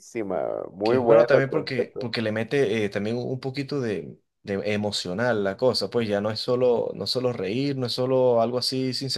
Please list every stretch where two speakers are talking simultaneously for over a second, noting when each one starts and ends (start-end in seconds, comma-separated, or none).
0.8-2.1